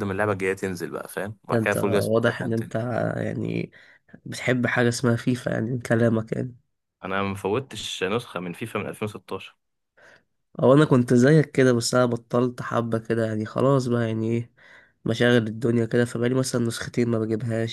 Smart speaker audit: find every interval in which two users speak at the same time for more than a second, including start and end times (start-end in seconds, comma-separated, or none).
1.5-2.7